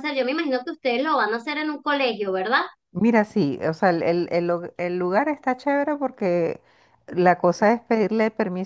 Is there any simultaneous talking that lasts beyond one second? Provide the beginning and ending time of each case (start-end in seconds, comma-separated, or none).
none